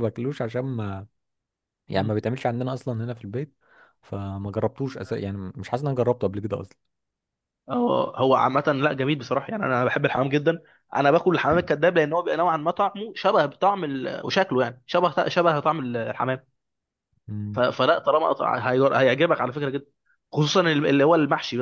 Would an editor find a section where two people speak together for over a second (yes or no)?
no